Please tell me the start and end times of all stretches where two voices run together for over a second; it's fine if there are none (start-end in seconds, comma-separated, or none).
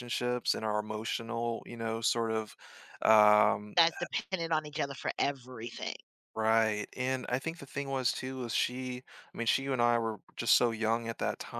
none